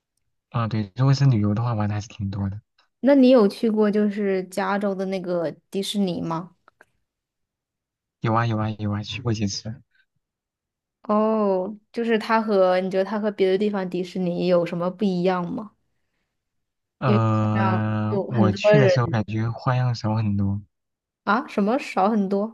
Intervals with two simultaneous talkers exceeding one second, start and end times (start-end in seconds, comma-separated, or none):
17.1-18.9